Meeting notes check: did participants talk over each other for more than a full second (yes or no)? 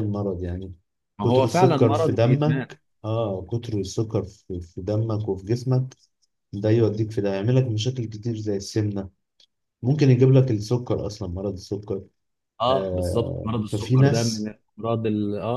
yes